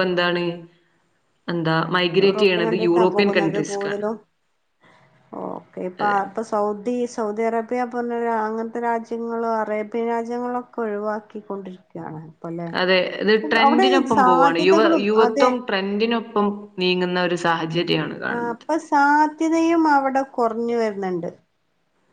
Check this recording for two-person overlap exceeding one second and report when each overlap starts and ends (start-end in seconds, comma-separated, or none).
2.2-4.0